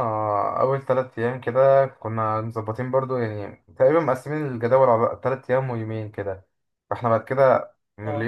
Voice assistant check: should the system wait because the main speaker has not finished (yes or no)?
yes